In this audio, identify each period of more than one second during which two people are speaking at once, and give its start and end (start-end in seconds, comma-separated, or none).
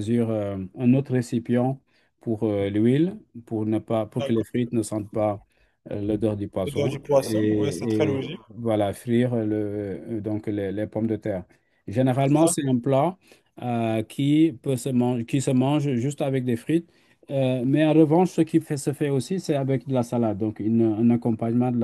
6.7-8.4